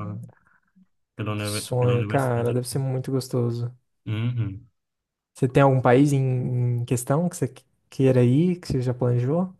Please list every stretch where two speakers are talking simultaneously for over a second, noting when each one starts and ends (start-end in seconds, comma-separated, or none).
1.4-2.8